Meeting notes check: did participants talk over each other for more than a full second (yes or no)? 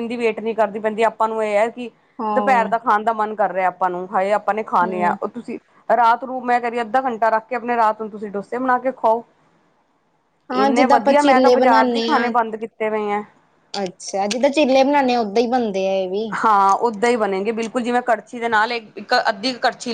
yes